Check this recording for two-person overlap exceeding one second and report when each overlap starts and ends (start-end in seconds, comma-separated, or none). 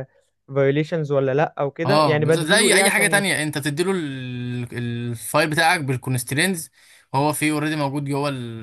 1.9-3.4